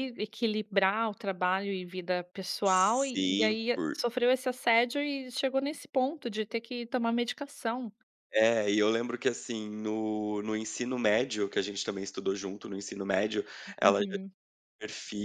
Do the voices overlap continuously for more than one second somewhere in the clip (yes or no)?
yes